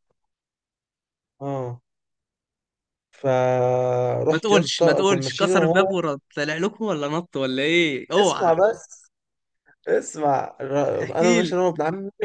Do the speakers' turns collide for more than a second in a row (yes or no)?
yes